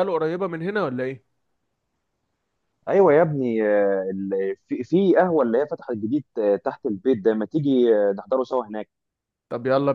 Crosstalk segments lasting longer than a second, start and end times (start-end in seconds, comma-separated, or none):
none